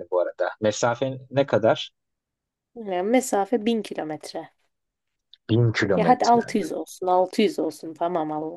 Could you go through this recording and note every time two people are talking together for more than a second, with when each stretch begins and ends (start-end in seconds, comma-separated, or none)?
none